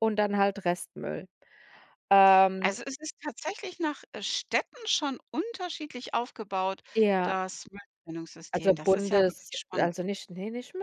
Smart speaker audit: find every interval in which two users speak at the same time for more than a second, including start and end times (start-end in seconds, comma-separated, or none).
8.5-9.9